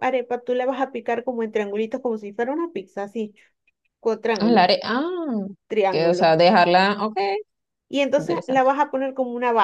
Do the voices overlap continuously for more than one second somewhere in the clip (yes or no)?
no